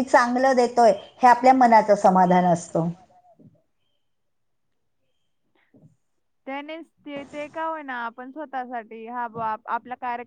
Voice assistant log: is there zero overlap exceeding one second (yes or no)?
yes